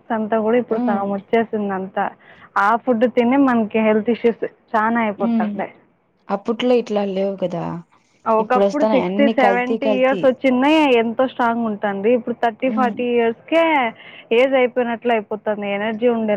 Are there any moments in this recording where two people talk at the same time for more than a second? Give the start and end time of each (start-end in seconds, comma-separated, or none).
8.4-10.2